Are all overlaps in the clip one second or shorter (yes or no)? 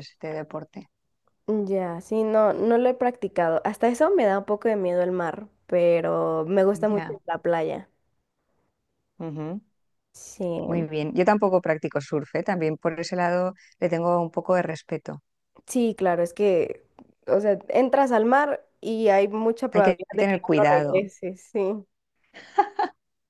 no